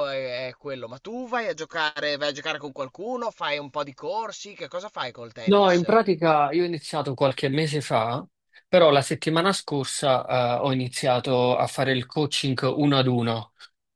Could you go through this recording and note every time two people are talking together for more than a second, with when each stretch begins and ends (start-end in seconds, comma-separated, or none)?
none